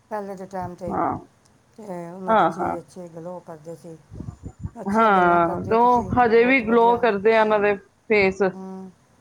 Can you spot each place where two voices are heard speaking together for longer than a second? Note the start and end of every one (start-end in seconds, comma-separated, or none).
4.9-7.0